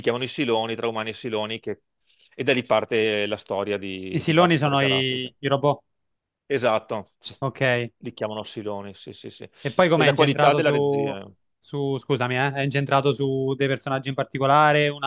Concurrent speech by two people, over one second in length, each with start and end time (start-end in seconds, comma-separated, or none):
4.1-5.3, 9.9-11.2